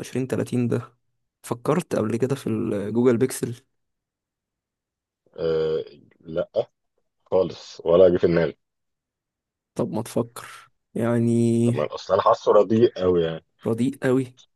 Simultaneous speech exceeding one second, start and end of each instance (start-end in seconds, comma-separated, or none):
none